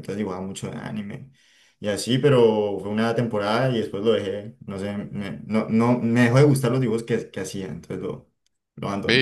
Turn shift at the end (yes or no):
yes